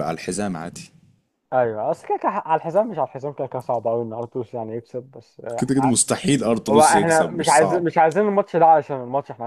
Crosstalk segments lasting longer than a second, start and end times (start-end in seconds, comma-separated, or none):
6.7-7.9